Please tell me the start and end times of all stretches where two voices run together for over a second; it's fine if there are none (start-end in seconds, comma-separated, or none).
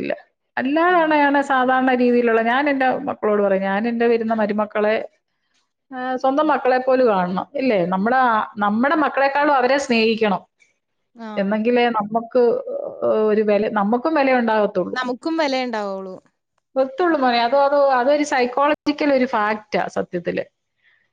none